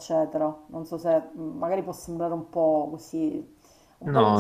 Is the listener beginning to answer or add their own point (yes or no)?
no